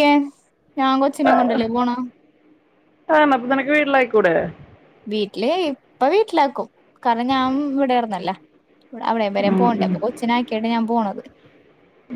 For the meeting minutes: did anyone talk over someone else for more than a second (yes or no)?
no